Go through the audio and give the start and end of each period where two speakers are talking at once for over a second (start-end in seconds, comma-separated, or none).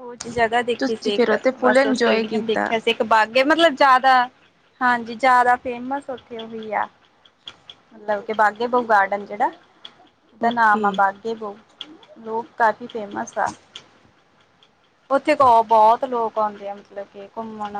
0.8-2.7